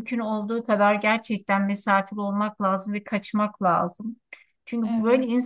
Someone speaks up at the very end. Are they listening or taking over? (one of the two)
listening